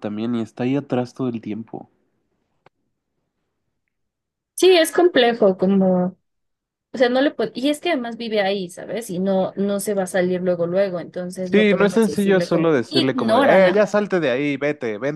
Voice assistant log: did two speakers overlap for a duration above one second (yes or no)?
yes